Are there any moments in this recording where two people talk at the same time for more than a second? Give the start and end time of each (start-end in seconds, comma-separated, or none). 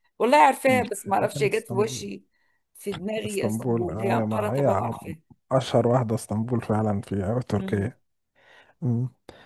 0.7-2.1, 3.2-5.1